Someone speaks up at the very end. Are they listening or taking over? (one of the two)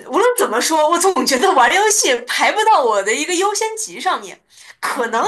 listening